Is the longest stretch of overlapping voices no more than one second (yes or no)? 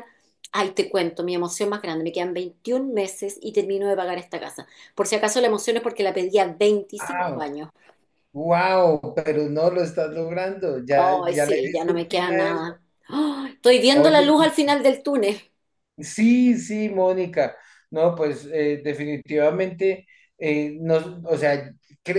no